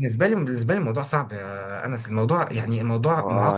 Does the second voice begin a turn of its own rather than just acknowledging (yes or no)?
yes